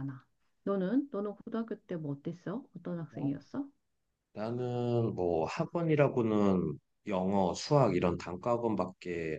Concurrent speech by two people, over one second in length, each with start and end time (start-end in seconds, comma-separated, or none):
none